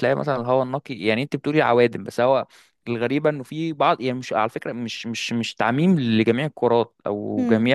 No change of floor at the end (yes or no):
yes